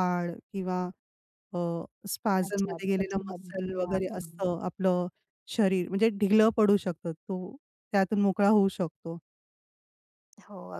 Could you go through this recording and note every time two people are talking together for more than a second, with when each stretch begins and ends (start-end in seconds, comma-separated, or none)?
2.5-4.3